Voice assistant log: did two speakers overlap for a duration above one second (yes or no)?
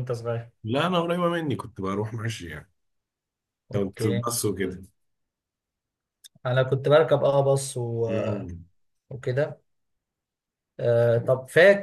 no